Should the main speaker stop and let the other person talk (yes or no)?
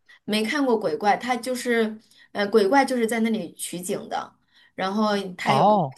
no